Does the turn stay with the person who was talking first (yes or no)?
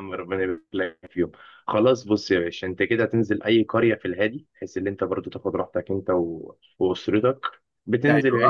yes